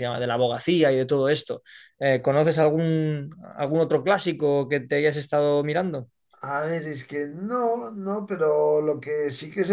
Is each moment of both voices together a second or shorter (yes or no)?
yes